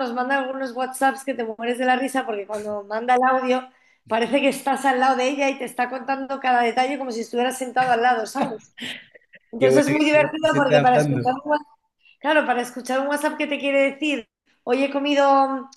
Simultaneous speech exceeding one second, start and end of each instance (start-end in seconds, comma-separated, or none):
9.6-11.3